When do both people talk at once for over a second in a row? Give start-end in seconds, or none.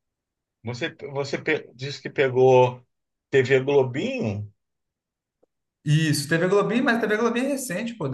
none